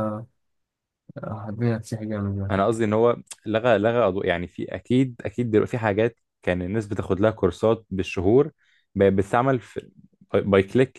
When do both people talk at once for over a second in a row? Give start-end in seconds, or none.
none